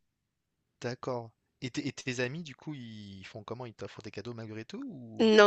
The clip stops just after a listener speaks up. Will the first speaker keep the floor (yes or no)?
no